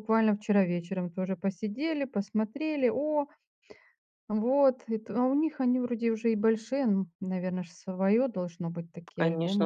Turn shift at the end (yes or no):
yes